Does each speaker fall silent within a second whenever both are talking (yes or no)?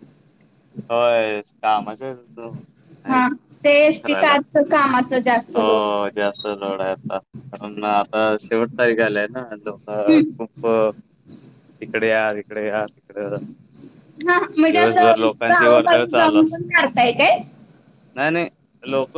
no